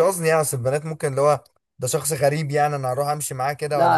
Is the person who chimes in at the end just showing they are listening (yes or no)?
no